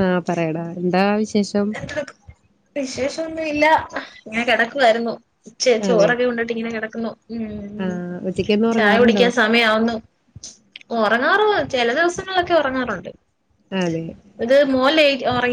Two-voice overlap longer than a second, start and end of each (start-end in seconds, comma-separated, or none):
none